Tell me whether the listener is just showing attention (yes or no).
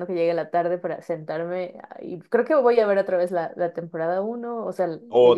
no